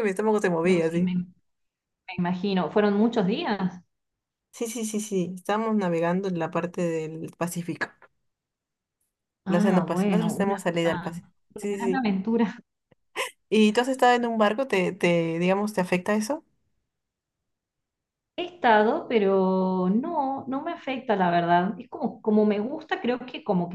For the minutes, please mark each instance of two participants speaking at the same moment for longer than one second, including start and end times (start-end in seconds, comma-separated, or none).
9.5-12.1